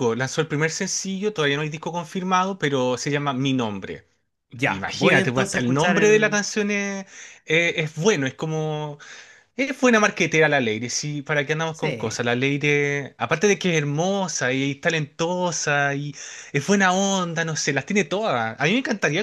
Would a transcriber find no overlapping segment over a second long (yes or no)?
no